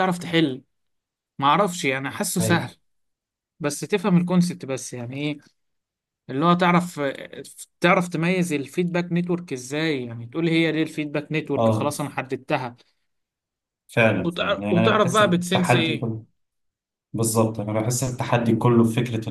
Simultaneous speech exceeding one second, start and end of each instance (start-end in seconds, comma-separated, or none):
14.2-16.1